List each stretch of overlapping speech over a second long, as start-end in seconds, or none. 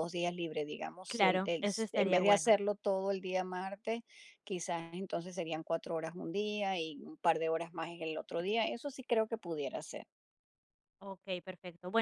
1.1-2.6